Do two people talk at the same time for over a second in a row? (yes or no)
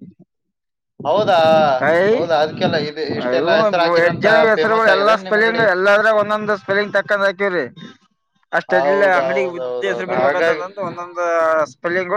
yes